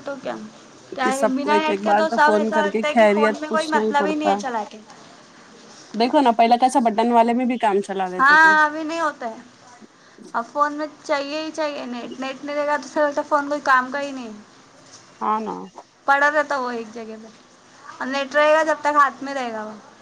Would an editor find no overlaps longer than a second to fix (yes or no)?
no